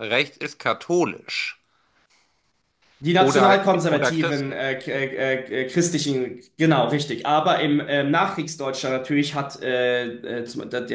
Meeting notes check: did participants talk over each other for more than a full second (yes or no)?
yes